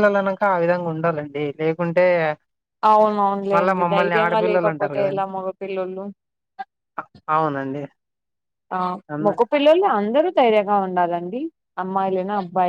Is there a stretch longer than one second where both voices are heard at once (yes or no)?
yes